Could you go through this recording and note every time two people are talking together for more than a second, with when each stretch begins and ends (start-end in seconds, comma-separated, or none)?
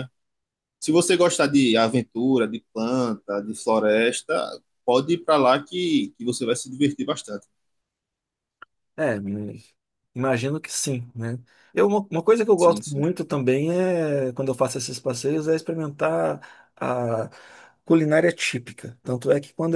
none